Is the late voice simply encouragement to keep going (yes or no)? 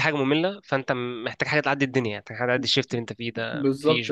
no